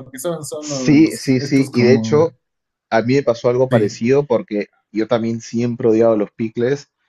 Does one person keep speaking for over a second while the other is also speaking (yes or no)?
yes